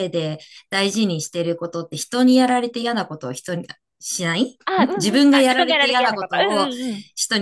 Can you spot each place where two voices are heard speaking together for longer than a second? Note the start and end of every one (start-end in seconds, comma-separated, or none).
5.0-6.7